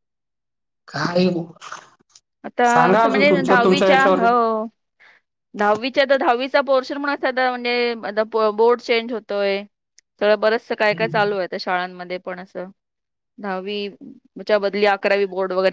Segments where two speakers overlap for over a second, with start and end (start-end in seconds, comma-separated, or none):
2.7-4.3